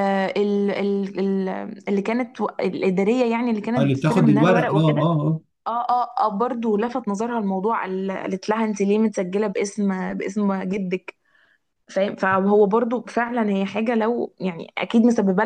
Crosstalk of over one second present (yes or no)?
yes